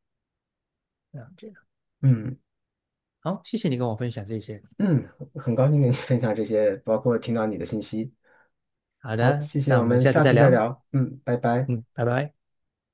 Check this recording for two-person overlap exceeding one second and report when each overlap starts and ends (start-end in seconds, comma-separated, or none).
9.2-10.6